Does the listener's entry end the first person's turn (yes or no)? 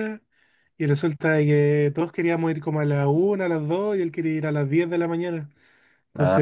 no